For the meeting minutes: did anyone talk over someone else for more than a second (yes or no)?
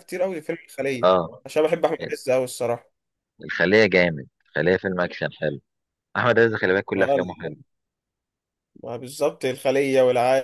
no